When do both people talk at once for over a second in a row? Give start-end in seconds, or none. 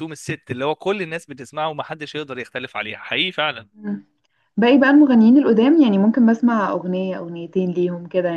none